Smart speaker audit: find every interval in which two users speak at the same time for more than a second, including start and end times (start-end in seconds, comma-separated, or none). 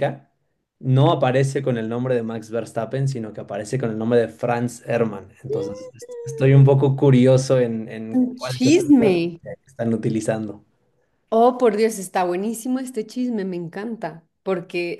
8.1-9.4